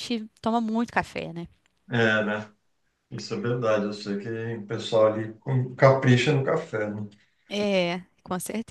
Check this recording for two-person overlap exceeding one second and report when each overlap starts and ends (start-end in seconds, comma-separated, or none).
none